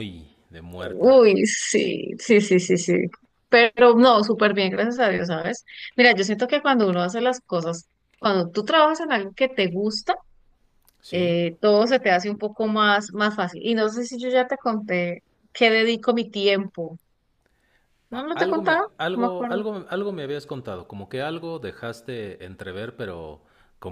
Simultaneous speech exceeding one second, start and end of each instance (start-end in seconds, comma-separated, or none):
18.1-19.6